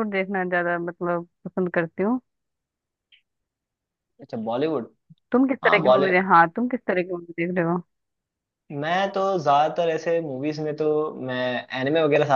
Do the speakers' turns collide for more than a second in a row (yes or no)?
no